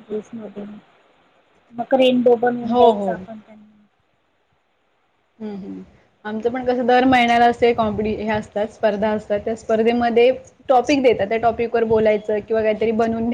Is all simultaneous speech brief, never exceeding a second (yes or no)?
yes